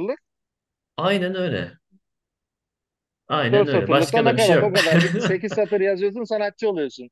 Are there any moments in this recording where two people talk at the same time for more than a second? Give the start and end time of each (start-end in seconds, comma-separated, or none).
3.5-4.8